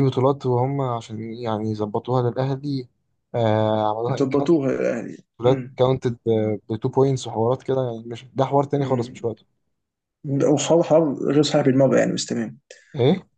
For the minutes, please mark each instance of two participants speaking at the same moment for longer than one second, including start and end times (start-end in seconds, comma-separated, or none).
none